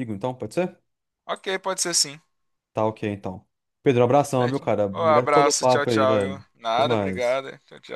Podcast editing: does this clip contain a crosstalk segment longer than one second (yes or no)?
yes